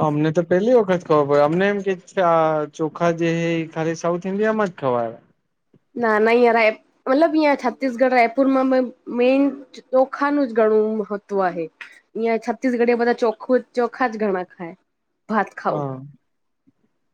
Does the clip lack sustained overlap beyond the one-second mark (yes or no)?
yes